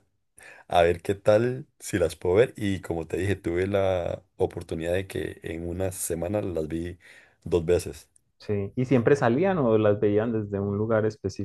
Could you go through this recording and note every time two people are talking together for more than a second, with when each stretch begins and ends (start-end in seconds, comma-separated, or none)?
none